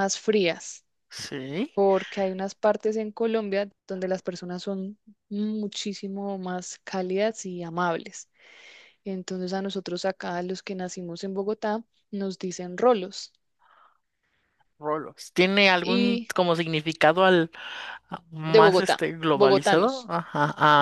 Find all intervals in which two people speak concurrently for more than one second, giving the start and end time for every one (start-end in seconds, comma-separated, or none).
18.5-20.1